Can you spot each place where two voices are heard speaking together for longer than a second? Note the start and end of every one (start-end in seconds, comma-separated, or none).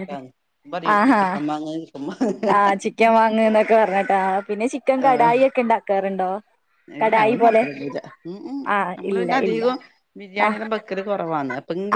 0.9-2.5